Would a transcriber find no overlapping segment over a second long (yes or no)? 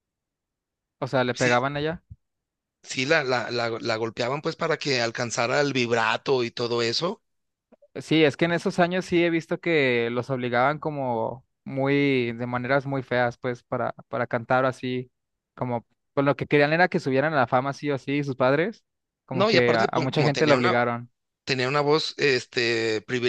no